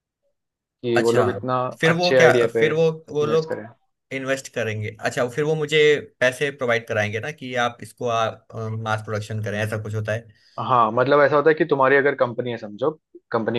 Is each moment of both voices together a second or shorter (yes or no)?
no